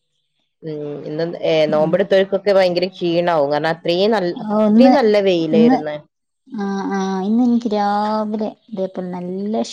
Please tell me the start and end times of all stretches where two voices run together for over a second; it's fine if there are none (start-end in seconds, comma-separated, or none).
none